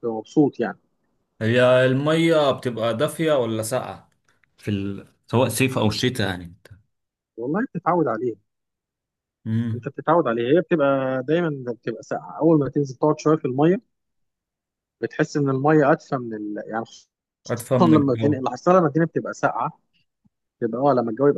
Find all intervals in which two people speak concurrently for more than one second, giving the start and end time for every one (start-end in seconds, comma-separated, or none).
none